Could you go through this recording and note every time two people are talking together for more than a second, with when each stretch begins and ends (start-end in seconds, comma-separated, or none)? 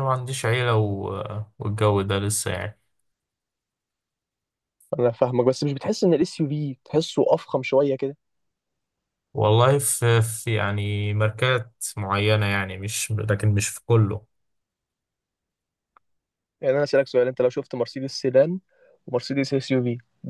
none